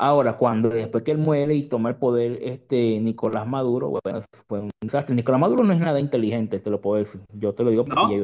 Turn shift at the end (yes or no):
no